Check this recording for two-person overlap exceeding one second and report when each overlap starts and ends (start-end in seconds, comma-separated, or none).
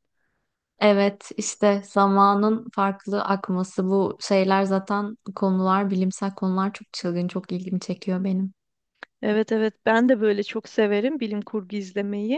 none